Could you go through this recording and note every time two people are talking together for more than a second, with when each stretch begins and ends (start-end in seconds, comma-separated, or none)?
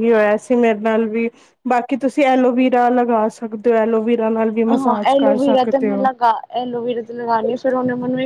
none